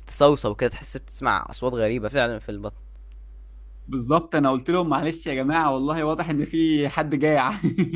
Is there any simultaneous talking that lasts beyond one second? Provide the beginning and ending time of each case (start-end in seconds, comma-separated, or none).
none